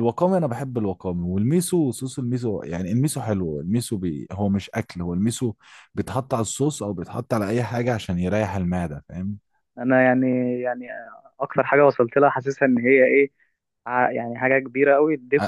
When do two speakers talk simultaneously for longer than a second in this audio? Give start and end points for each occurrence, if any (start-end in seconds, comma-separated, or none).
none